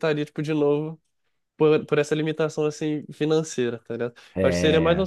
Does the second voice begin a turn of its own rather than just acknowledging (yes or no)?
no